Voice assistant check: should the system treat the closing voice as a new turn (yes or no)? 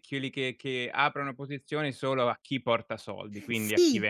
yes